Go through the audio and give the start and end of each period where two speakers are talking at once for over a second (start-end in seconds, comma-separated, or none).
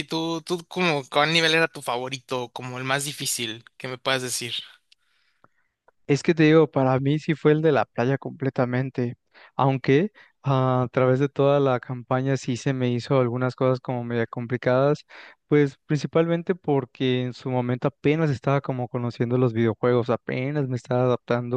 none